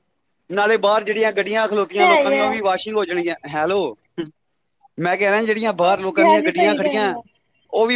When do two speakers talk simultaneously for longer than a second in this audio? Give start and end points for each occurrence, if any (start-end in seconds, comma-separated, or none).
5.8-7.1